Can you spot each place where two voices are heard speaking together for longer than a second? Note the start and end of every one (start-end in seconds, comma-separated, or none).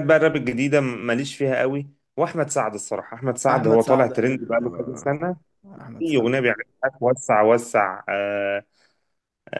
3.5-5.1